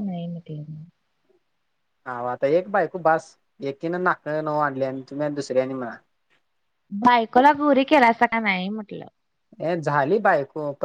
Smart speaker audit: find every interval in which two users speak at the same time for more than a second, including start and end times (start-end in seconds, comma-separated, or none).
none